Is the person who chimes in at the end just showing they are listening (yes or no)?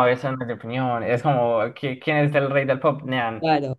no